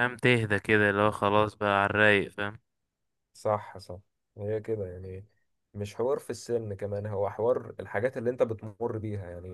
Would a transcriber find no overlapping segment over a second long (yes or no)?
yes